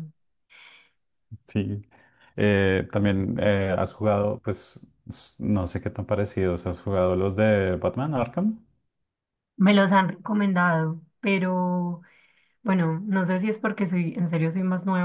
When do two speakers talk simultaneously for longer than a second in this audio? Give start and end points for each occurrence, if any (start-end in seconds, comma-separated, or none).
none